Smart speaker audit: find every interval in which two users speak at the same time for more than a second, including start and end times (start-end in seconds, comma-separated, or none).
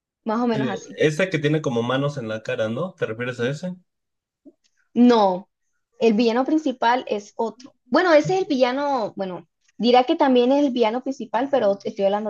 none